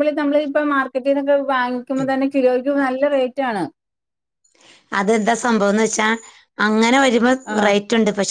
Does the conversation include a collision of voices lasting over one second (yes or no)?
no